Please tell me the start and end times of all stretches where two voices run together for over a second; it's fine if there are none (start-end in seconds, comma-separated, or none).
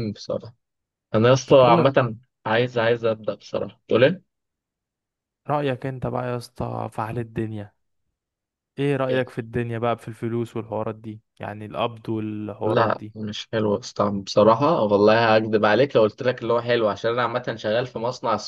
none